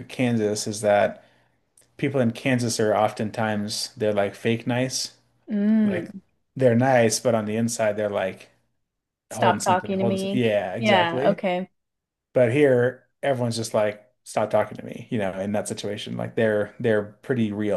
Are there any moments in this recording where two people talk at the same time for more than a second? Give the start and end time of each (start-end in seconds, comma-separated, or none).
9.3-11.4